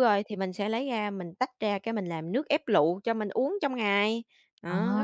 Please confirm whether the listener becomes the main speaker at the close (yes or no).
yes